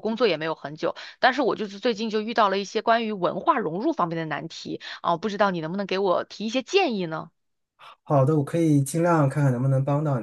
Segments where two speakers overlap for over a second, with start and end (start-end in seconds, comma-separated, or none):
none